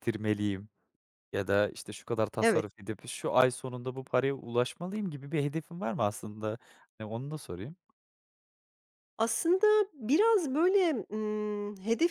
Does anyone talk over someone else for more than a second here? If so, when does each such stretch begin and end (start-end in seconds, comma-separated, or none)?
none